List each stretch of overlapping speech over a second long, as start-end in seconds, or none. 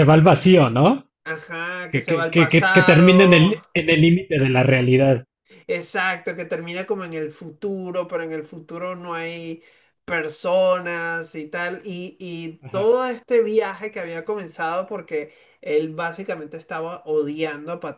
1.9-3.5